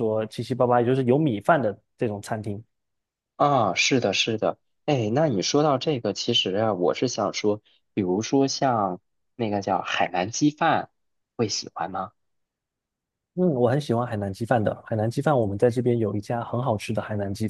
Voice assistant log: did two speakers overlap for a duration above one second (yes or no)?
no